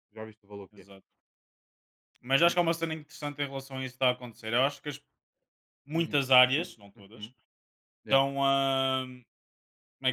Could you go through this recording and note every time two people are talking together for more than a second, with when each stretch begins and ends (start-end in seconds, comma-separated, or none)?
none